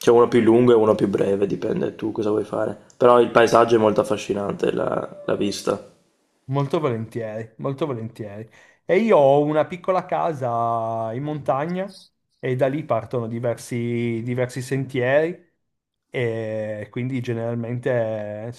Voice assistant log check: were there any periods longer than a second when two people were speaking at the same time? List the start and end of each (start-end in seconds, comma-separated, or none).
none